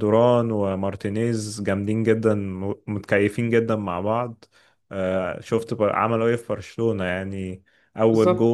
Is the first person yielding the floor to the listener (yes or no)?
no